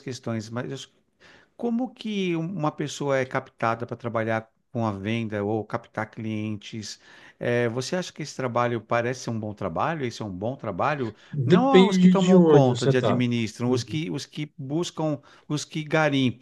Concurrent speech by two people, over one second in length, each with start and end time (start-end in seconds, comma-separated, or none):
11.3-13.2